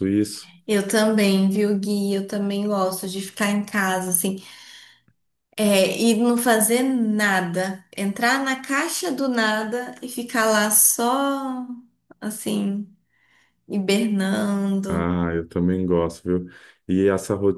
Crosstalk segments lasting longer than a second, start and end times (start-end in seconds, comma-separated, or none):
none